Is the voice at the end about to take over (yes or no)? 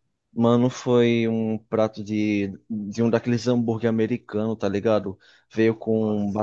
no